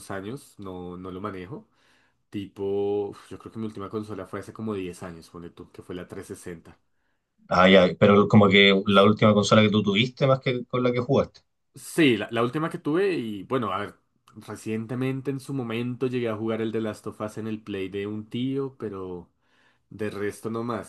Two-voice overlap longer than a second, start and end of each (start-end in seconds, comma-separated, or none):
none